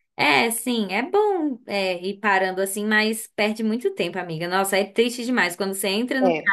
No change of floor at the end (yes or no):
yes